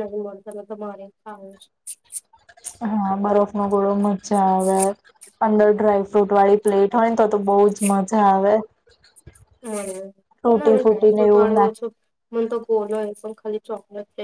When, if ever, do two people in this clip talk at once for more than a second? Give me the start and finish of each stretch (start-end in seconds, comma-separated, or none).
10.6-11.8